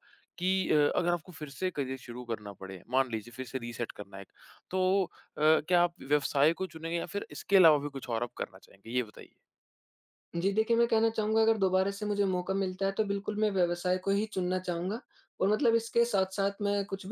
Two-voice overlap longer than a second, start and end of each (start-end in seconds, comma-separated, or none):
none